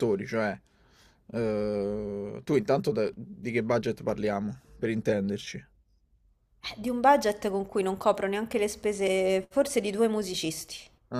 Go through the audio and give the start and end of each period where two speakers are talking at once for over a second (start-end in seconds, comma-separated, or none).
none